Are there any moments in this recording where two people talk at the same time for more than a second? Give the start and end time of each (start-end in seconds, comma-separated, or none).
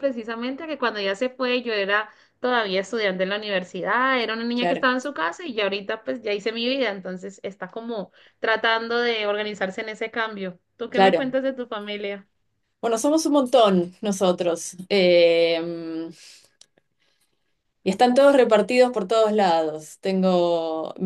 none